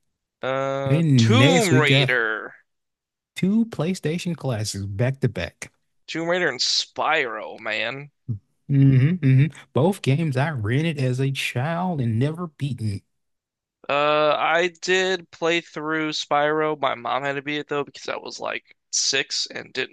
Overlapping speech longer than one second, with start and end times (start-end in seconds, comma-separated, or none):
0.8-2.1